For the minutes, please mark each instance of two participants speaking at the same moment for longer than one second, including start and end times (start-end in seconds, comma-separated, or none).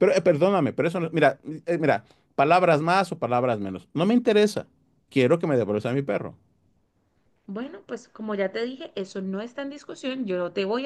none